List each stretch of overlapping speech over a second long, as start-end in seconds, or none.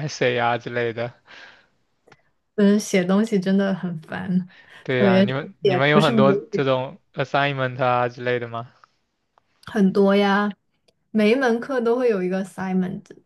5.0-6.6